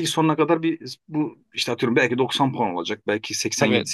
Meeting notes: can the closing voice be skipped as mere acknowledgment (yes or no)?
yes